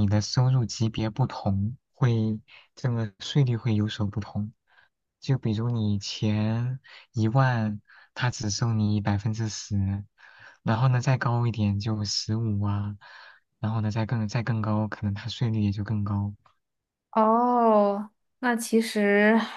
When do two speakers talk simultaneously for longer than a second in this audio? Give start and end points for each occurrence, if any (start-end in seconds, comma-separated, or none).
none